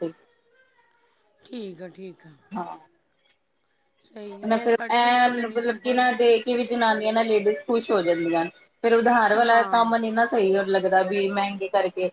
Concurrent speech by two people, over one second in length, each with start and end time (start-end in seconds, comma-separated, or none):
4.4-6.1